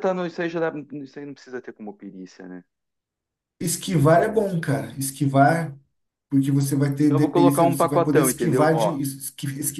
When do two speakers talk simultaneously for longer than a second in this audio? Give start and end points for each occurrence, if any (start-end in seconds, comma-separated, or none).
7.0-9.0